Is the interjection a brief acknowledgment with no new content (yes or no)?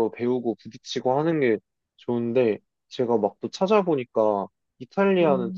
yes